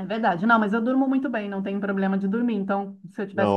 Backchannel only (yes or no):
yes